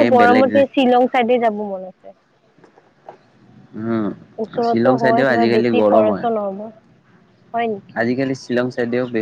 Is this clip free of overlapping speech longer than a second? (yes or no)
no